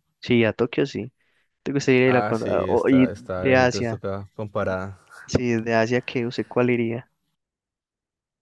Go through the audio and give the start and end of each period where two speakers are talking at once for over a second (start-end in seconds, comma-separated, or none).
2.0-4.0